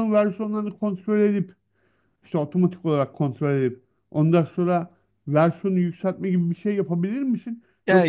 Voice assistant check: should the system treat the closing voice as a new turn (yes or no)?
no